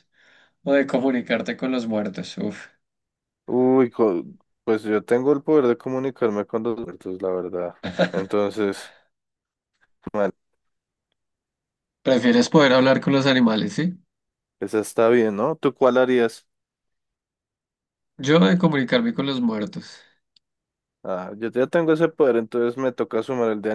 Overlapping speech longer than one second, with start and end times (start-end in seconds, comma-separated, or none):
none